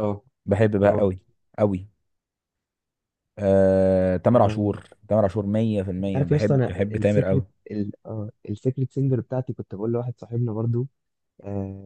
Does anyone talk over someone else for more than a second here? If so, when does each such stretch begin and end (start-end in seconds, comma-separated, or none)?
6.0-7.5